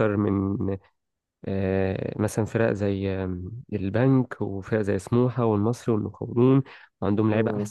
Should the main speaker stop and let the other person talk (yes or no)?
no